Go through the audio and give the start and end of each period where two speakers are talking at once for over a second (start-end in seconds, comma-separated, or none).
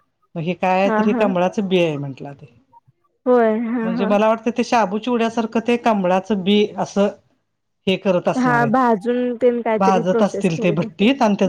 none